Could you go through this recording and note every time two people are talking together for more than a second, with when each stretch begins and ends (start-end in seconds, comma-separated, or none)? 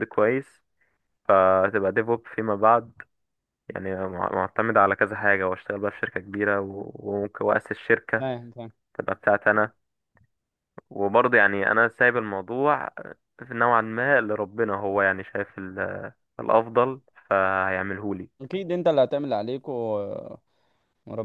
none